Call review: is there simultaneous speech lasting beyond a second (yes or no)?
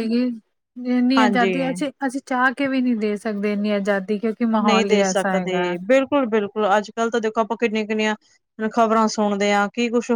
no